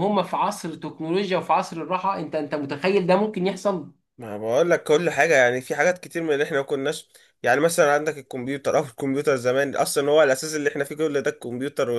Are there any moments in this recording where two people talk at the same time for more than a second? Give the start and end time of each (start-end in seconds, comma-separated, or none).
none